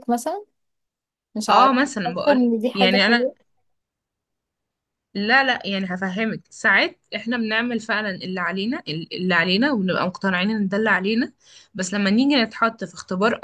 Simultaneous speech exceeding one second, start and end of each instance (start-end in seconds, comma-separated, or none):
1.5-3.2